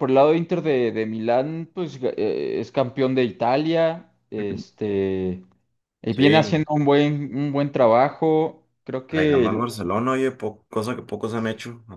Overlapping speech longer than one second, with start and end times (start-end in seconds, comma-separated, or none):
none